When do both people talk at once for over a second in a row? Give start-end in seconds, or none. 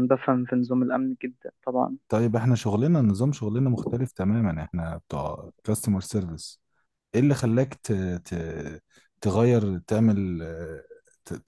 none